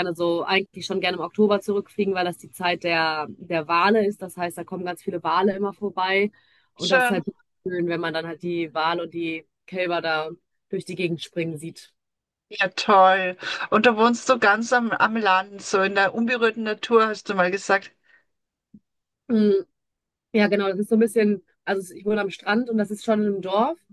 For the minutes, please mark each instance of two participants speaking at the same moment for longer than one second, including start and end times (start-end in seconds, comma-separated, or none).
none